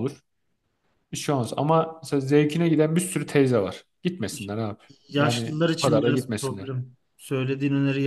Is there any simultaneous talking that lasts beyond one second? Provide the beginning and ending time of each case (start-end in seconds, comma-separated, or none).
5.2-6.7